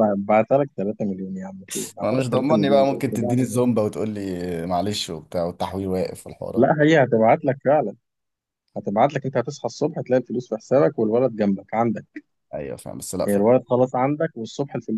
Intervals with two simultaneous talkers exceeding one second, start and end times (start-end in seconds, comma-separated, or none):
2.0-3.7